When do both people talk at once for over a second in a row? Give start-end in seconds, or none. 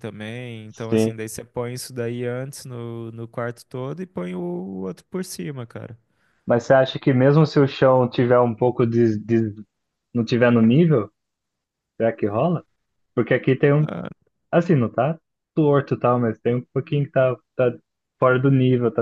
none